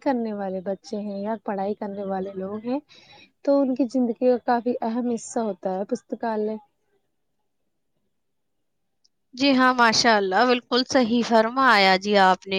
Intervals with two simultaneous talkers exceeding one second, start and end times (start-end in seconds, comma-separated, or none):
none